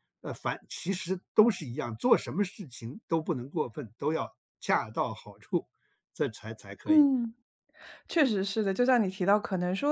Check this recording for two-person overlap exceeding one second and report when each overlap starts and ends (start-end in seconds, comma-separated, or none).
none